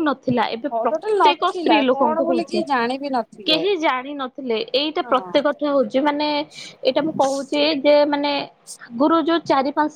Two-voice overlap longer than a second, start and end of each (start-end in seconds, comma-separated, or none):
0.7-2.6